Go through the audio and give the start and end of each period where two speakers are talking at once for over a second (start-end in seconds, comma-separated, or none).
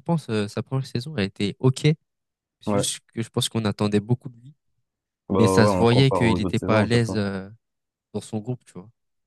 5.4-7.2